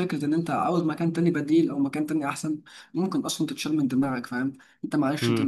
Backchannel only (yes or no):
yes